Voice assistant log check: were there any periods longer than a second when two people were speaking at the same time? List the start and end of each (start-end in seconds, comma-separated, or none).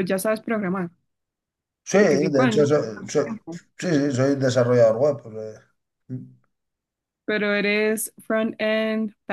2.0-3.3